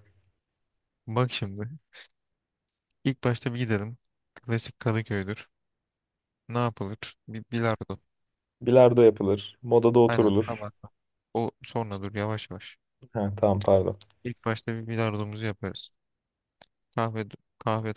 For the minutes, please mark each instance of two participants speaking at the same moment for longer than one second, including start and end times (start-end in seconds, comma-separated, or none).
none